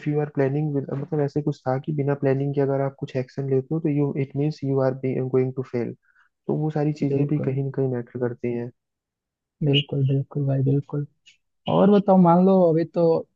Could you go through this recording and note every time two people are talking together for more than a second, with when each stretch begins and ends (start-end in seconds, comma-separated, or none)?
none